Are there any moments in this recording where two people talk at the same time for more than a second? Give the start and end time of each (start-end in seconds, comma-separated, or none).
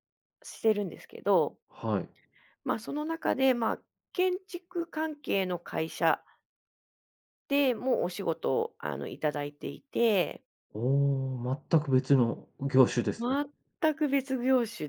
none